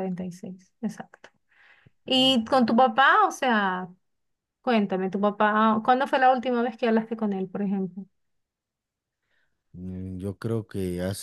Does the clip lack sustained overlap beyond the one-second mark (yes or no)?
yes